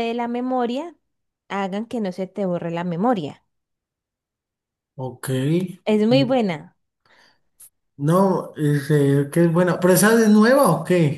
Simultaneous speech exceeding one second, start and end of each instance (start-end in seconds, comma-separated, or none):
none